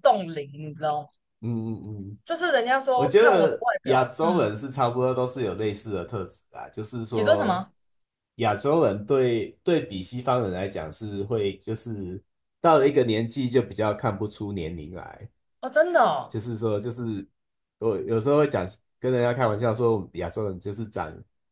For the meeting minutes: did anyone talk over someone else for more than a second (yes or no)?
yes